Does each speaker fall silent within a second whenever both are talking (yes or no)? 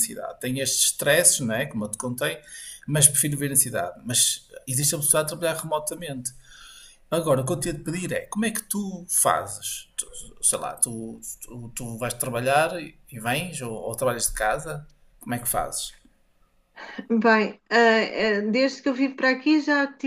yes